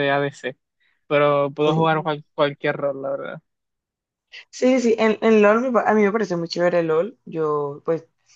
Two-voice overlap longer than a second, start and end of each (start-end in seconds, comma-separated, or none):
none